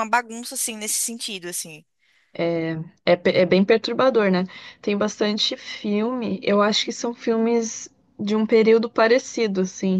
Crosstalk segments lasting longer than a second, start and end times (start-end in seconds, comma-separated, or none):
none